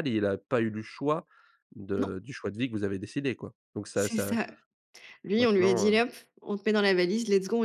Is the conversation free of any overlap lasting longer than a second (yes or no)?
yes